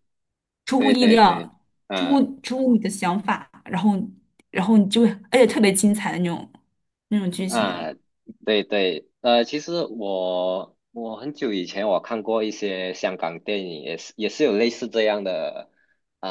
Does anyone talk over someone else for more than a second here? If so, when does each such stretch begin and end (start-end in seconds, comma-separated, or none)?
0.8-2.3